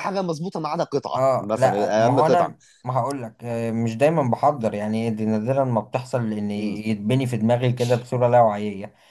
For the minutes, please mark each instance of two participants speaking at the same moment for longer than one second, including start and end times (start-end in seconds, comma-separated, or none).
1.1-2.5